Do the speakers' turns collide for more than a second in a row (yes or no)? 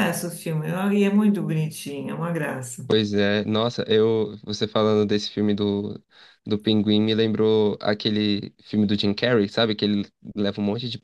no